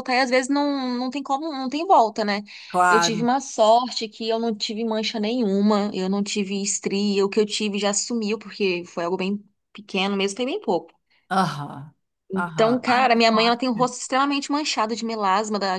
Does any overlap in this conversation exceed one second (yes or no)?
yes